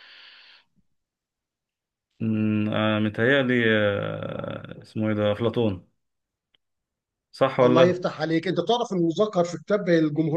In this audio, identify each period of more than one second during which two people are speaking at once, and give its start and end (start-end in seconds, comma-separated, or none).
none